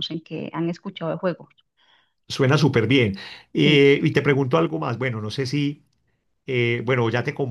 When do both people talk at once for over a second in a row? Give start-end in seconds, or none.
none